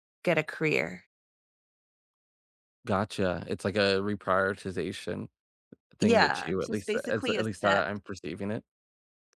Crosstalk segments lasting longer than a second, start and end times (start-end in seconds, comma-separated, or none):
6.0-7.9